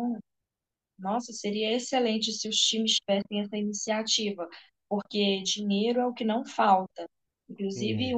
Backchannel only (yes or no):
yes